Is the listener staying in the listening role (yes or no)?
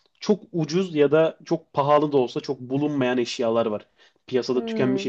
yes